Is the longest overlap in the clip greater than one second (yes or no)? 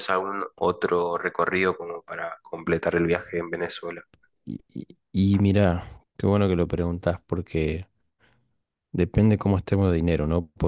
no